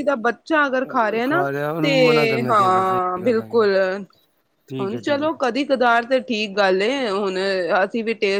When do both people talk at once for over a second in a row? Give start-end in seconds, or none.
1.8-3.6